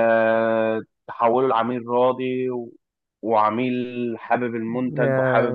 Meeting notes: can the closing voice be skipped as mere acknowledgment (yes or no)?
yes